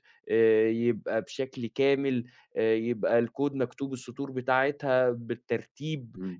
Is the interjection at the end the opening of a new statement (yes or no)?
yes